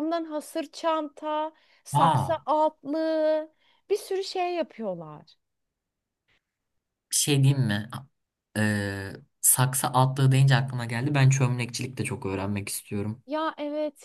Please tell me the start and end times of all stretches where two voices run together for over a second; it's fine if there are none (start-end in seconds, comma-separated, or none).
none